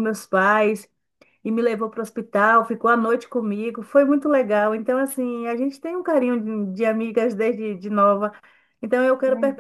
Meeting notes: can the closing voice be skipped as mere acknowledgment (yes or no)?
yes